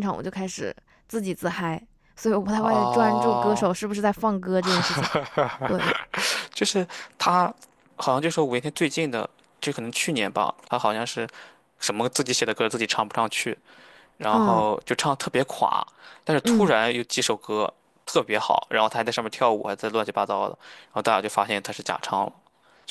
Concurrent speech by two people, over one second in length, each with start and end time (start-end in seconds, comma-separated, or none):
2.5-3.8